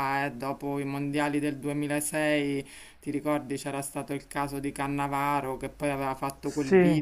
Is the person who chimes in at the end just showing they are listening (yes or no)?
yes